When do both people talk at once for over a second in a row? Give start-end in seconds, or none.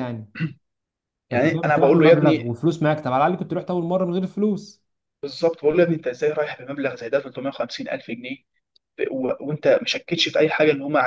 1.3-2.6